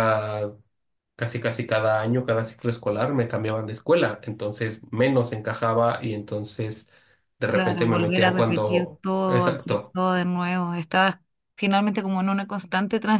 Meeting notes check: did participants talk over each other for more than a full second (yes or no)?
yes